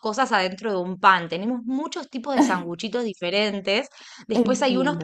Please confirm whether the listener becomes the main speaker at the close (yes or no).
no